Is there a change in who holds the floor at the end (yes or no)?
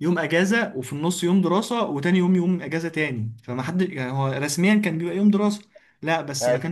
no